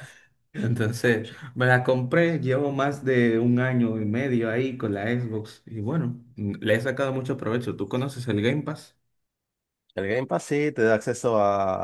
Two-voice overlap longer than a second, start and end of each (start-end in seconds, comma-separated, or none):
none